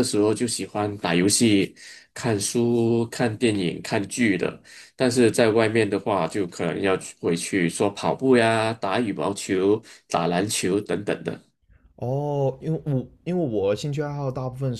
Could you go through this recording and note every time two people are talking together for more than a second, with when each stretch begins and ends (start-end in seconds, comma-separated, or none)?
none